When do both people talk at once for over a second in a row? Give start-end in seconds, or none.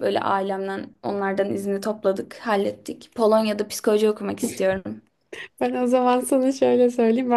none